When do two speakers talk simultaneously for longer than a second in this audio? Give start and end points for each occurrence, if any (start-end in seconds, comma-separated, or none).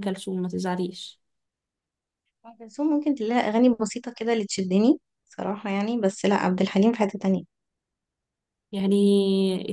none